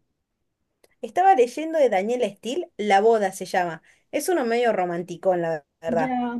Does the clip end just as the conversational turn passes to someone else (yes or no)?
yes